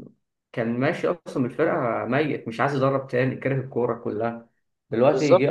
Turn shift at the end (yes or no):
no